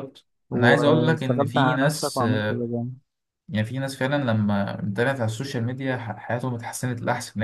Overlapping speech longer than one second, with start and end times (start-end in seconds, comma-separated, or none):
0.5-2.7